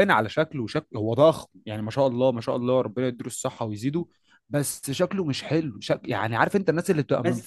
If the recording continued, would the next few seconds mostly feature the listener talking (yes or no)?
no